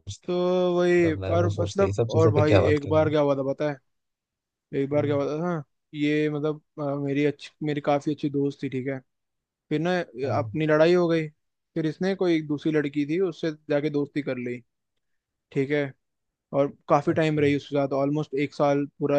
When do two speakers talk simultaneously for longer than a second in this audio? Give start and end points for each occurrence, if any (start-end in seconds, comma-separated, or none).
1.0-3.1